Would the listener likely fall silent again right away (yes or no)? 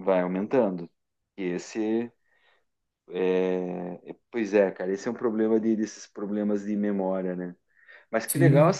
yes